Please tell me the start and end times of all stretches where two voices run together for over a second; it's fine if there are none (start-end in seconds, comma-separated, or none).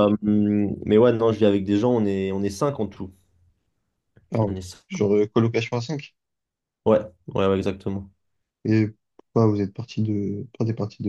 none